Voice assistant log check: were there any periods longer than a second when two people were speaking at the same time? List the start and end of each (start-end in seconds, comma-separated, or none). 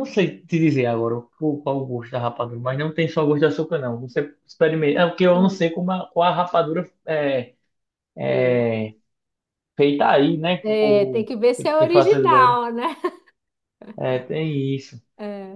10.6-12.6